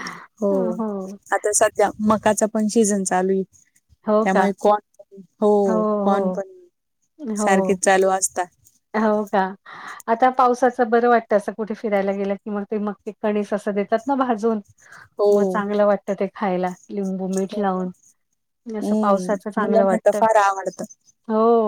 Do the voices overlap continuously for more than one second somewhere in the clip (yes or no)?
yes